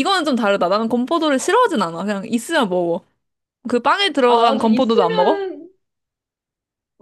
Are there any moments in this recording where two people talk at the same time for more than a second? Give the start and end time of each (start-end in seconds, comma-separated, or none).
4.2-5.5